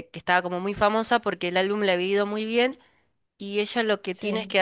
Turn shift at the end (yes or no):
no